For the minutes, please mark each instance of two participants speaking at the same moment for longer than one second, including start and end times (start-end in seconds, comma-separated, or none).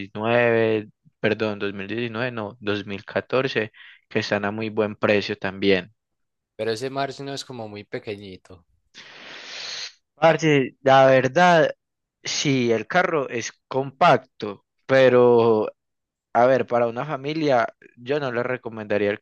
none